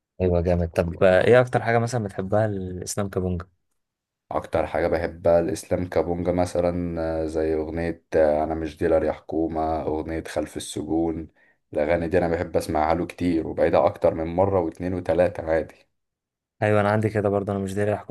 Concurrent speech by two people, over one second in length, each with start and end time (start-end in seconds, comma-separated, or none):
none